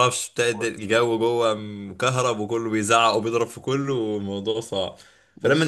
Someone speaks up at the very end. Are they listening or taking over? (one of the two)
listening